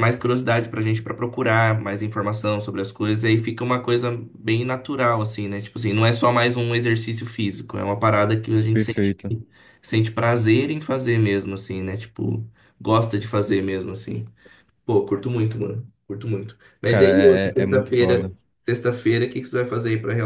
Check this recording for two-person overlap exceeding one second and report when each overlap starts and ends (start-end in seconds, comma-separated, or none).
16.9-18.3